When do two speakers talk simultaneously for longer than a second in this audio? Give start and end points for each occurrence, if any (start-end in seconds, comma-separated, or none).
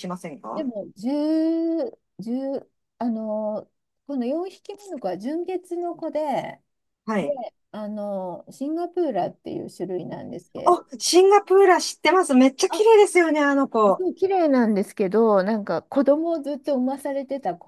none